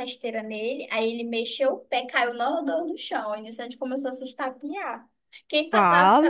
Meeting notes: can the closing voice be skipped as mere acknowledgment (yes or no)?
yes